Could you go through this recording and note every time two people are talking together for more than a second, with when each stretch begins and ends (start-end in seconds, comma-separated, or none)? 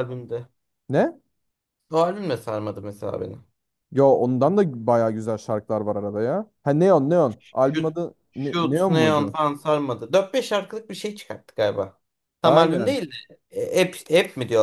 7.6-9.4